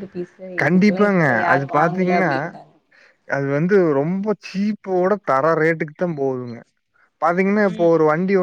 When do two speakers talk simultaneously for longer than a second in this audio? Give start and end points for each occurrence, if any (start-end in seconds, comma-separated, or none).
0.6-2.3